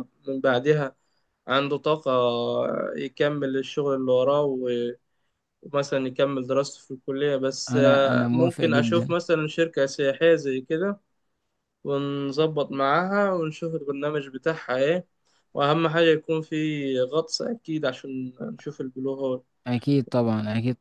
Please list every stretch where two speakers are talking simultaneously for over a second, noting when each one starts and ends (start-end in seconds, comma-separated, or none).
7.7-9.1